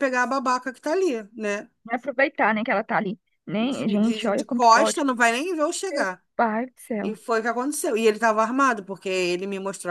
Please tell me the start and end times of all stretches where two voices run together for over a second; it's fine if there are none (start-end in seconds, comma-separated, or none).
3.6-5.0